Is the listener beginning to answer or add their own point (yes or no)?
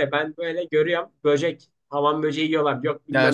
yes